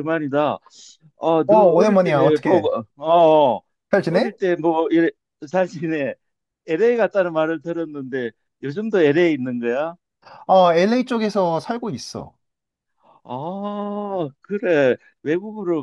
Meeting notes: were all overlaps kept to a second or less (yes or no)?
no